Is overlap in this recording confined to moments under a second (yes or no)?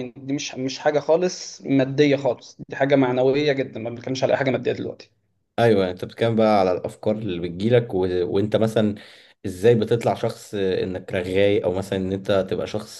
yes